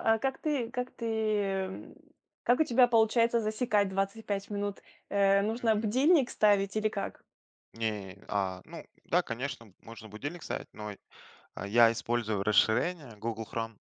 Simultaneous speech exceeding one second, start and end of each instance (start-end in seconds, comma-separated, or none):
none